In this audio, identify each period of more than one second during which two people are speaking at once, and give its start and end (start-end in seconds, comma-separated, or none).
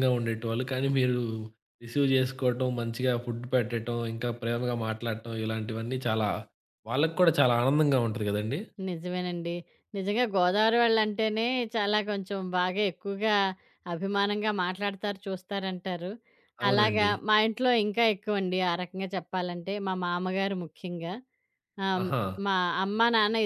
none